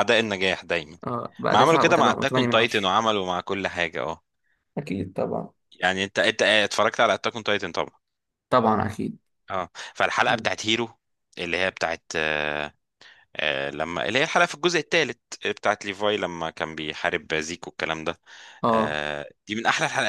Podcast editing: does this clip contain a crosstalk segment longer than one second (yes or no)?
yes